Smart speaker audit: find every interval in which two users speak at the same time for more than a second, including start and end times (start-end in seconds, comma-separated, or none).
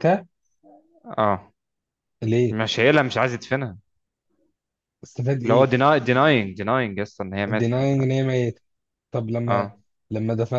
none